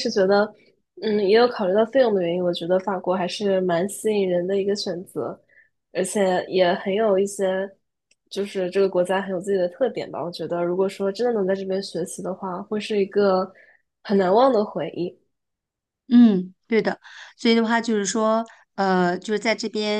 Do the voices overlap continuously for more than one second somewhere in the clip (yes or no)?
no